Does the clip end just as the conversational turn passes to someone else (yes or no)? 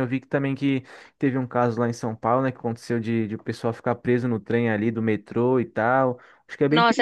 yes